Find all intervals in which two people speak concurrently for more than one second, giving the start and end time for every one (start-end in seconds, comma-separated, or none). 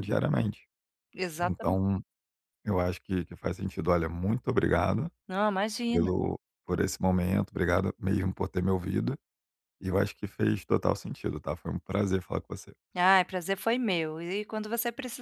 none